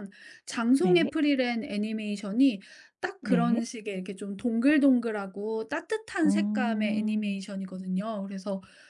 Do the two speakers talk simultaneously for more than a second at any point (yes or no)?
yes